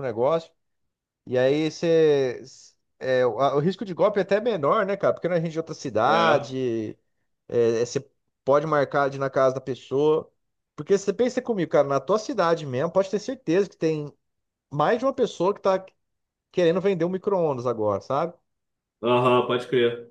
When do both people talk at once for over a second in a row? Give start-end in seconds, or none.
none